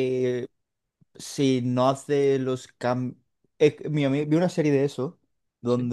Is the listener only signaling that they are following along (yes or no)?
yes